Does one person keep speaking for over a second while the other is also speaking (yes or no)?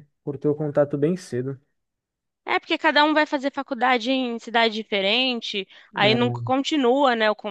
no